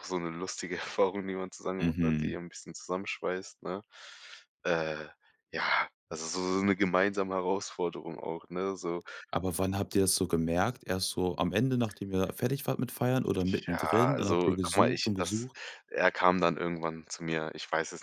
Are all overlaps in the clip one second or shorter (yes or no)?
no